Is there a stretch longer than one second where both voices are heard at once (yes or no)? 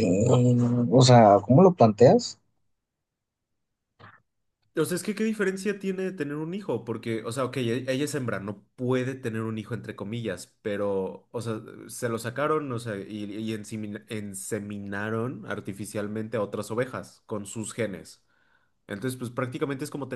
no